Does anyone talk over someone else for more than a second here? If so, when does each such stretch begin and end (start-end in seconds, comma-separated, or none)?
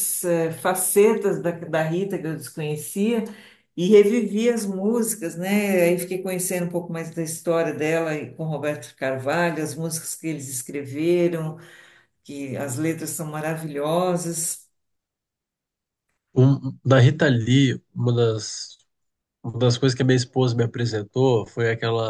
none